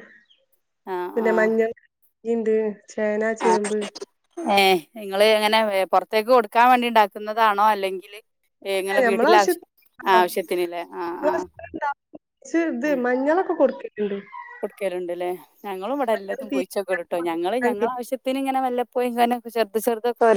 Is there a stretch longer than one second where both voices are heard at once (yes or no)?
yes